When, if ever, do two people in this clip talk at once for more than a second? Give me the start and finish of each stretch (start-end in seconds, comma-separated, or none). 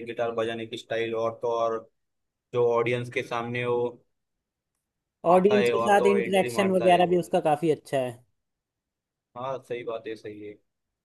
5.3-7.0